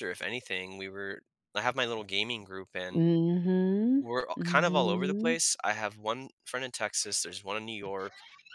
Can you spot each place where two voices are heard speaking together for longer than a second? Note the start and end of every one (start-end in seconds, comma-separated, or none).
4.0-5.4